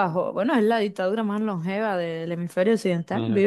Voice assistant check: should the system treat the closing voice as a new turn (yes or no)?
no